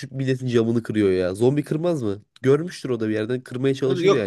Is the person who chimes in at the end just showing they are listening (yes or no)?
no